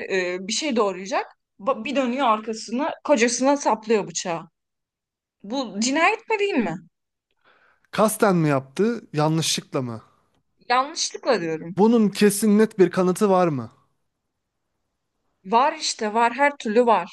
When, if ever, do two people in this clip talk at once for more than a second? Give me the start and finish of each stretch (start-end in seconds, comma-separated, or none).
none